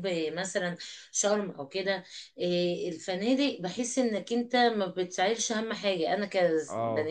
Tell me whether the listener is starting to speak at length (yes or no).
no